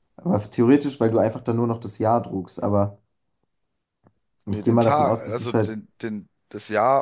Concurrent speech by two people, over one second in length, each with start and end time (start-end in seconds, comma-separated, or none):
4.5-5.8